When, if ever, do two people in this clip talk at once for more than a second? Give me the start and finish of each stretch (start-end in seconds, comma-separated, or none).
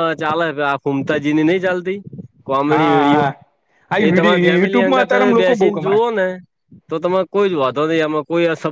4.0-6.0